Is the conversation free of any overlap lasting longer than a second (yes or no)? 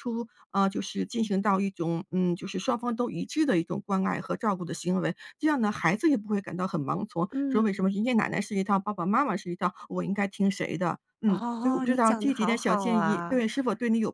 no